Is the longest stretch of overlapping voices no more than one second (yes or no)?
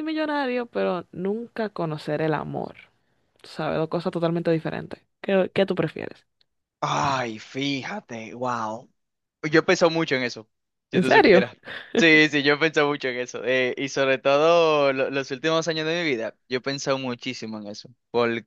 yes